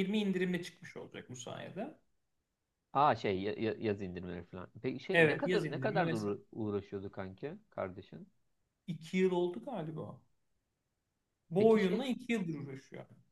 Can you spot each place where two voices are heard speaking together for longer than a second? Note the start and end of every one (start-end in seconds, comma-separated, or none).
5.1-6.4